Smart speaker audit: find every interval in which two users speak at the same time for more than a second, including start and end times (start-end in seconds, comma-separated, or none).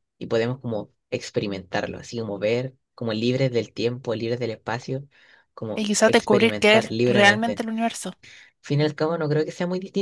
5.7-7.6